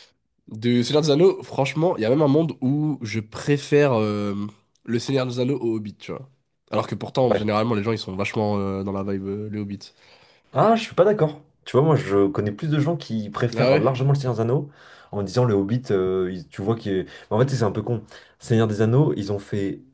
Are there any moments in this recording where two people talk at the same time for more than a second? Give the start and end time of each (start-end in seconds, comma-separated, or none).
none